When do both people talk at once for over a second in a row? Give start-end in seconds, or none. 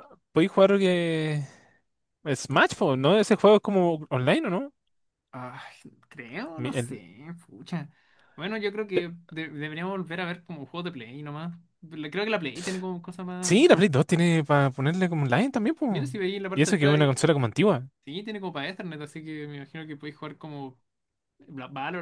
none